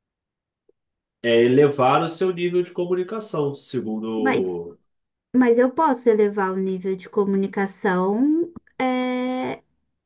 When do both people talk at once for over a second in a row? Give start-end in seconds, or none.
none